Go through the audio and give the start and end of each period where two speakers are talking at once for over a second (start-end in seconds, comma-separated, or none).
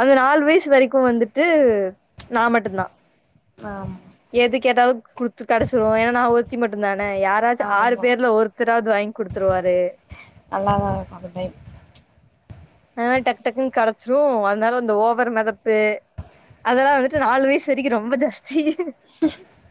none